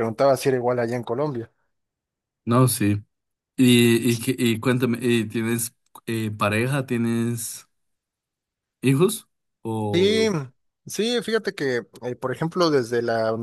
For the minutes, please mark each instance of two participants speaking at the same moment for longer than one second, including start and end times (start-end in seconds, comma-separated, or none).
none